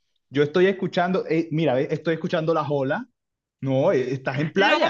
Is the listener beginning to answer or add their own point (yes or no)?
yes